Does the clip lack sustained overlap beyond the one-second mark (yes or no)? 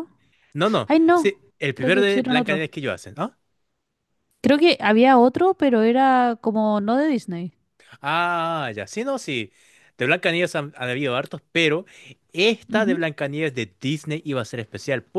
no